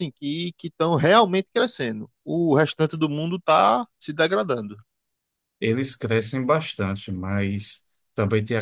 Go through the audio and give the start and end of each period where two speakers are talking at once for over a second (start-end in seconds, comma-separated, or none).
none